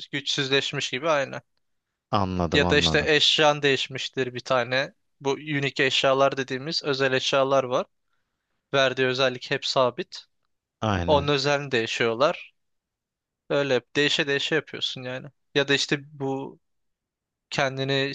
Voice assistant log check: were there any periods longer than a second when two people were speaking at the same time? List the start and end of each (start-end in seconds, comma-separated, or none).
none